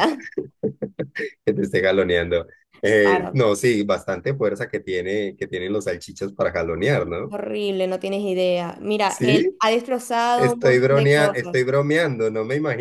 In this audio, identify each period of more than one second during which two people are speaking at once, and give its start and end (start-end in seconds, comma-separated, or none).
10.3-11.7